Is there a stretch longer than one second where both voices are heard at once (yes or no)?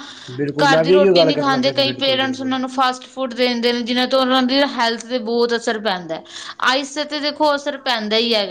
yes